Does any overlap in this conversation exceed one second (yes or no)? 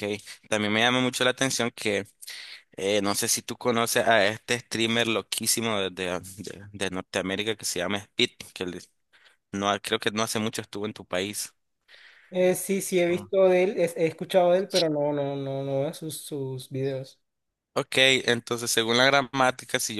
no